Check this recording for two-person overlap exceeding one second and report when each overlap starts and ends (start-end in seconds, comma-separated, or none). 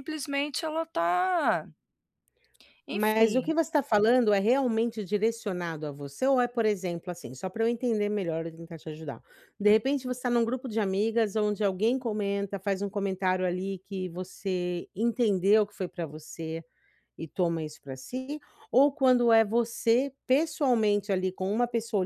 none